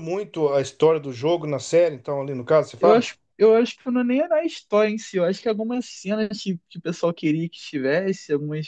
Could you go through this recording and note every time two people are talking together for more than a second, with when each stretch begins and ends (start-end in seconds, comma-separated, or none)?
none